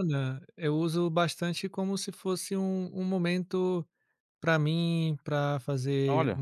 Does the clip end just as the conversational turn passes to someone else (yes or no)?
no